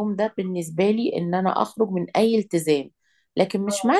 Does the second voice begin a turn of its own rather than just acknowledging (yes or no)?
no